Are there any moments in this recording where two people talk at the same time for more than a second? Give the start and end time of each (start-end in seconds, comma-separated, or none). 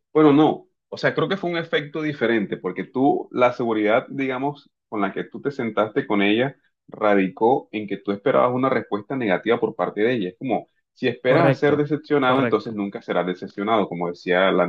11.2-12.8